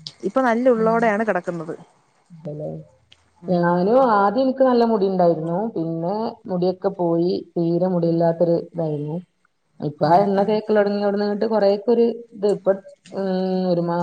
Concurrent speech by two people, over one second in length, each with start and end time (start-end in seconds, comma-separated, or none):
none